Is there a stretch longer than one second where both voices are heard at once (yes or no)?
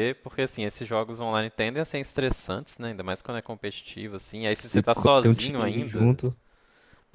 yes